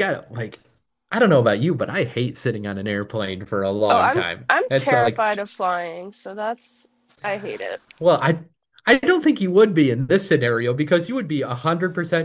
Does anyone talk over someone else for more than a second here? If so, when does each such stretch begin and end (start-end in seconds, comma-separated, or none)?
3.9-5.4